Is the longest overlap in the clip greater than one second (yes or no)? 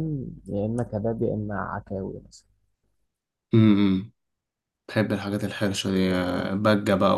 no